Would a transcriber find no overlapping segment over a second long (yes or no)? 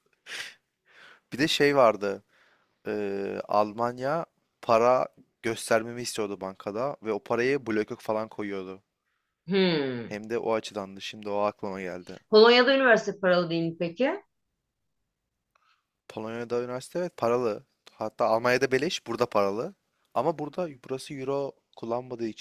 yes